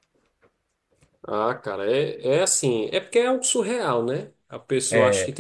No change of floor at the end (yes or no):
yes